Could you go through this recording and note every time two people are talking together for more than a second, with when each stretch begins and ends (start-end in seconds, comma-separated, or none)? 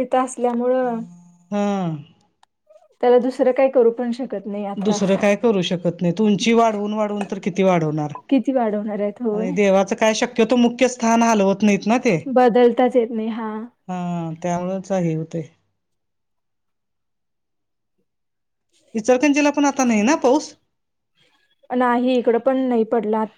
none